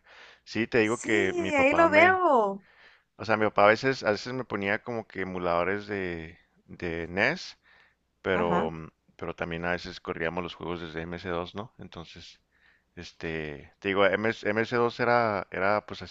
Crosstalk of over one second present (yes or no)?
yes